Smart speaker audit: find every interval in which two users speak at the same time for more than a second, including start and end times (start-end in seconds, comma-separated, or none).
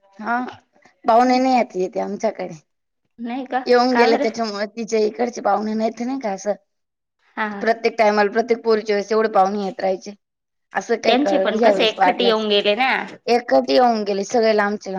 11.1-12.4